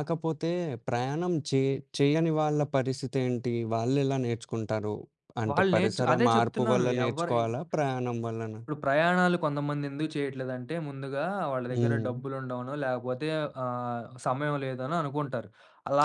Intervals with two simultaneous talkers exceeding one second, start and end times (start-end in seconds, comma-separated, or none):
5.5-7.4